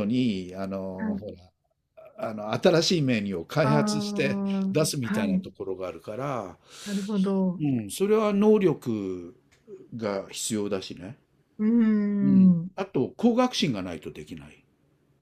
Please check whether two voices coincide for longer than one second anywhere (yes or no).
yes